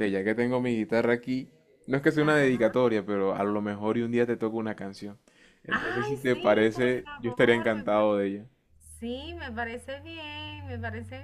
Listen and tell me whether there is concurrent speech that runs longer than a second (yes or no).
yes